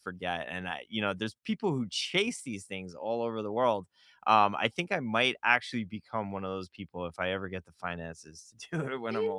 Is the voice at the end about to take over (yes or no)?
yes